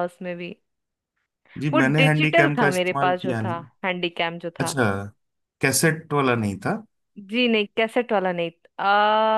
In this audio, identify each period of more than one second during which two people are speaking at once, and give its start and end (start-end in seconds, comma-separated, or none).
1.7-3.7